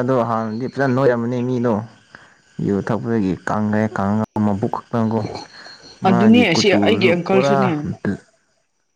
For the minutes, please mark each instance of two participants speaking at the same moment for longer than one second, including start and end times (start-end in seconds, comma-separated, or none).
6.1-7.6